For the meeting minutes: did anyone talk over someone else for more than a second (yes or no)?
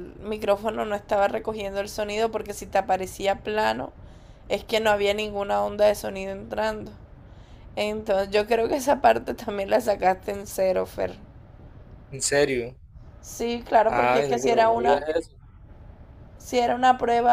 yes